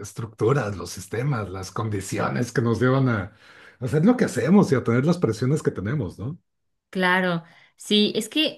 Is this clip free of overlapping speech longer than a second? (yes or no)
yes